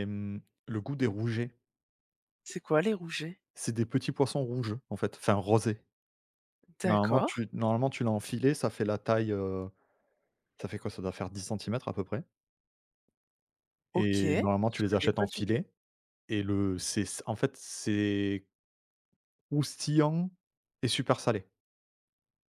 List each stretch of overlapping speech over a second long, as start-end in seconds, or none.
13.9-15.6